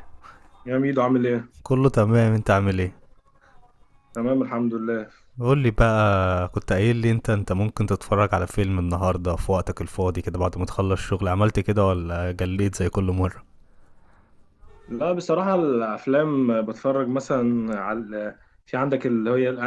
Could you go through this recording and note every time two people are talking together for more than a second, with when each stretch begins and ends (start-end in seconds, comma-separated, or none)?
none